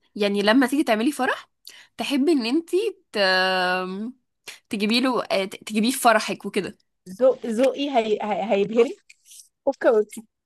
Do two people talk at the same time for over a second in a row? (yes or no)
no